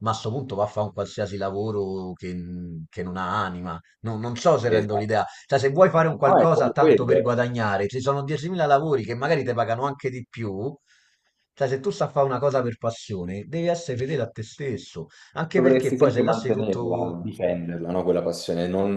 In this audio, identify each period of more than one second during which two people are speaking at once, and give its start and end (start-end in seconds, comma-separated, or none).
6.1-7.3, 15.6-17.2